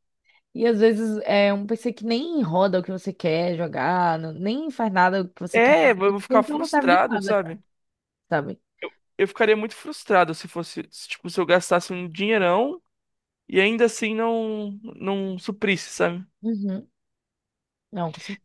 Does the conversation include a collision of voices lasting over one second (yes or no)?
yes